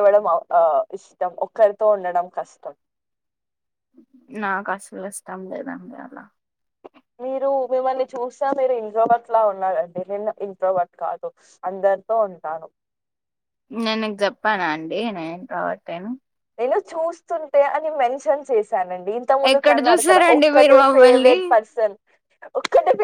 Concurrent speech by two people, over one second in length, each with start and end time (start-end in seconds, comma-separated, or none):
19.5-21.4